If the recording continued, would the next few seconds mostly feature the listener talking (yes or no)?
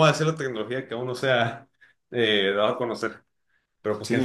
yes